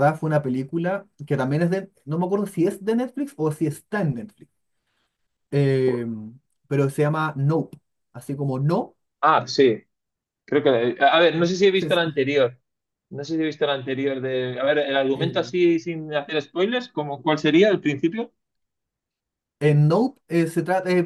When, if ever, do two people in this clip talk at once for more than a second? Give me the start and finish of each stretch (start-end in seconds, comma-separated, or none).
none